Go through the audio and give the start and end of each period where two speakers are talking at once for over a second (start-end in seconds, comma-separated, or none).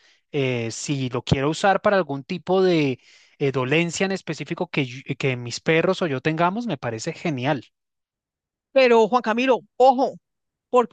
none